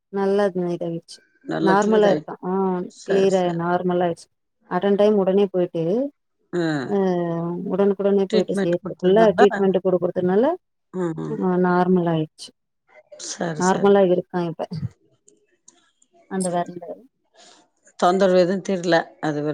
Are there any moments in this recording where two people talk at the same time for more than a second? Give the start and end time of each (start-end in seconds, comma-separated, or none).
8.3-9.6